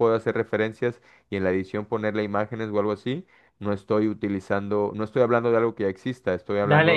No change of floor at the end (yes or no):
no